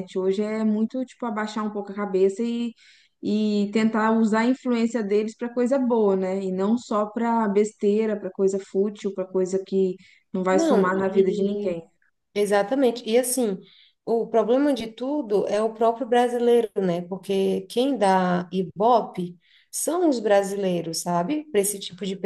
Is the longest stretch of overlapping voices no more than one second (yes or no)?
no